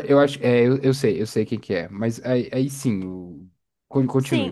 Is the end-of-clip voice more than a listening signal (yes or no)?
yes